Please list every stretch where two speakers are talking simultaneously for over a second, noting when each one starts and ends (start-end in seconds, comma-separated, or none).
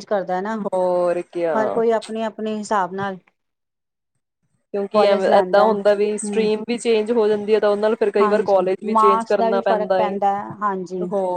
4.9-6.5, 8.2-9.9